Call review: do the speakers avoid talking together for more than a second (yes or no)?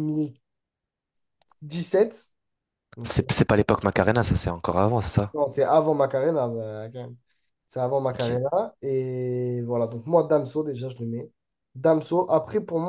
yes